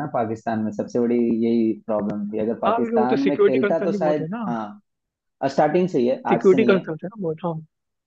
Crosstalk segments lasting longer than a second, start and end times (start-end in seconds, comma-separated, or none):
2.6-4.4